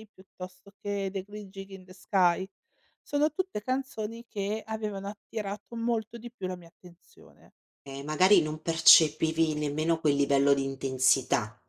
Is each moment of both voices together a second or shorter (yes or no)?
yes